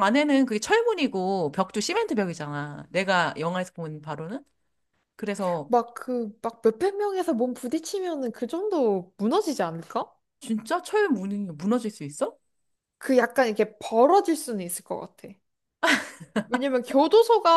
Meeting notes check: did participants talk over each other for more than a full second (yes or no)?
no